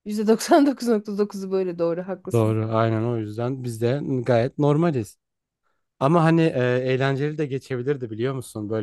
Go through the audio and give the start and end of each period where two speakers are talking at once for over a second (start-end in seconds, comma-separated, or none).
none